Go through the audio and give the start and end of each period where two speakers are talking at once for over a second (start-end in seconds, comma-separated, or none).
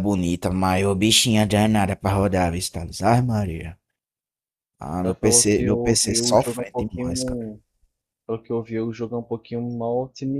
5.0-7.4